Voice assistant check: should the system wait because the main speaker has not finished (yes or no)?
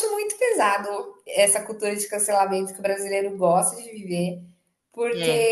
yes